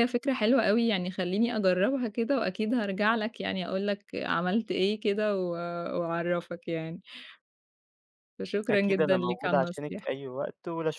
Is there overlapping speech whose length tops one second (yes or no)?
yes